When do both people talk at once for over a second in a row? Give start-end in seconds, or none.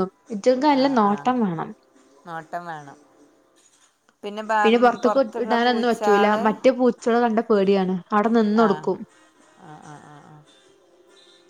4.6-6.4